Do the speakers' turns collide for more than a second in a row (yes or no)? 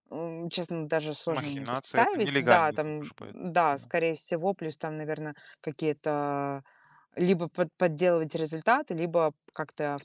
yes